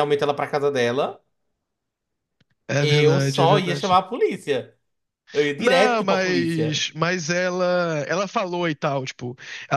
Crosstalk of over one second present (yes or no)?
yes